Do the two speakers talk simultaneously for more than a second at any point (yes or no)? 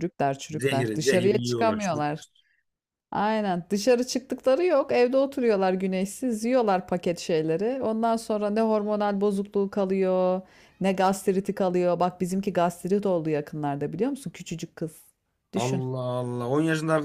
yes